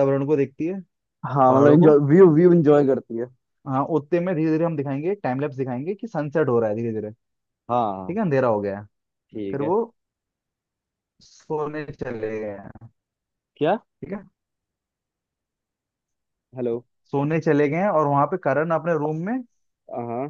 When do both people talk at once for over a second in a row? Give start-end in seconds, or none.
none